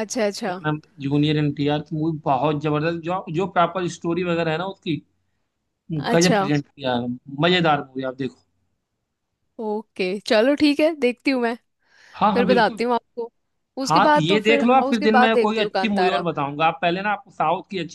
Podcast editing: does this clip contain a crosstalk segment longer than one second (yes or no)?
yes